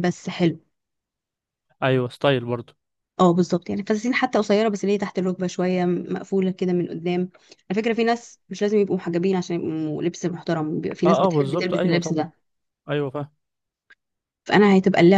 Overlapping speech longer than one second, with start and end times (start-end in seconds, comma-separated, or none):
11.0-12.3